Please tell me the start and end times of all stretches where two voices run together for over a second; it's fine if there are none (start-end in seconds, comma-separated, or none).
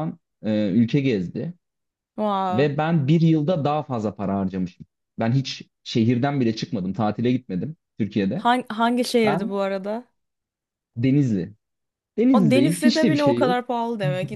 12.3-13.6